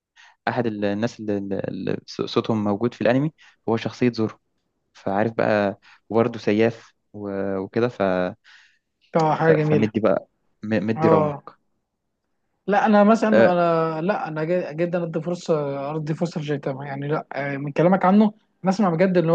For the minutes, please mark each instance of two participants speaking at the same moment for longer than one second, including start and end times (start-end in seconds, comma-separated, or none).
none